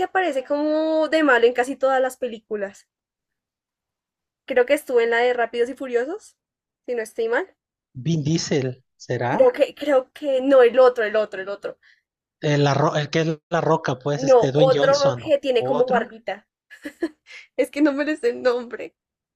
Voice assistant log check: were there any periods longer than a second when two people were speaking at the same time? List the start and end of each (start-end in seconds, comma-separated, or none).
14.2-16.1